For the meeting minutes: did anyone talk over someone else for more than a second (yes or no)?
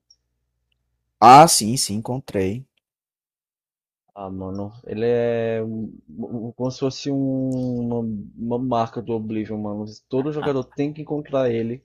no